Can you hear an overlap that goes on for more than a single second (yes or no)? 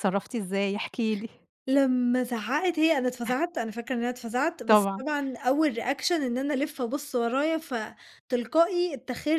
no